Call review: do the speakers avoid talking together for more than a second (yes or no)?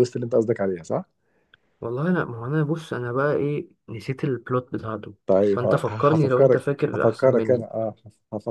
no